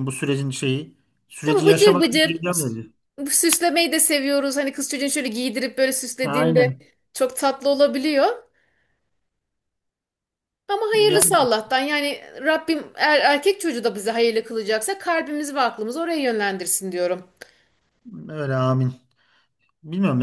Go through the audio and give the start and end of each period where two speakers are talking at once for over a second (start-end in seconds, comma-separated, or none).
1.4-2.8